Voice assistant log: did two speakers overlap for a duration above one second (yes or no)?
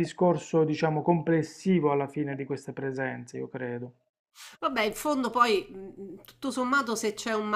no